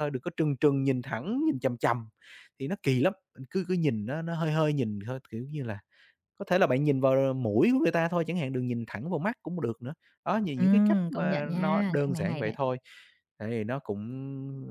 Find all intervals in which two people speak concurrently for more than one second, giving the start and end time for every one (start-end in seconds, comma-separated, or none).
10.5-12.6